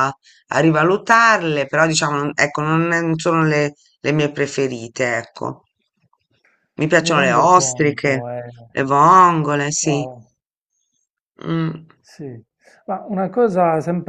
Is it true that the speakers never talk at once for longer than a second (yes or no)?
no